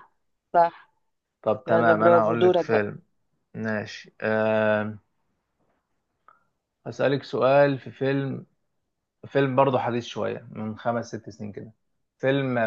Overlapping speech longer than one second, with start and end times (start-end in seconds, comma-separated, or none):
1.7-2.9